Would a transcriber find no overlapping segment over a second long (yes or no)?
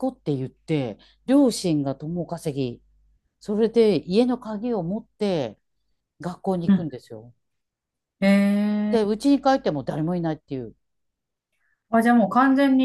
yes